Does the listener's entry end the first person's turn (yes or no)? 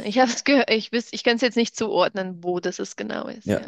yes